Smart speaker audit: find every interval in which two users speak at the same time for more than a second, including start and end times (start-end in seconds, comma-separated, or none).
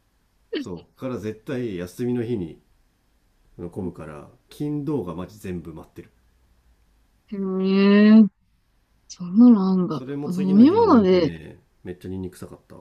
9.9-11.3